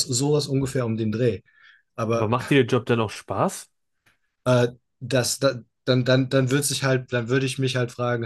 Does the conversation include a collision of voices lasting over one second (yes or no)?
no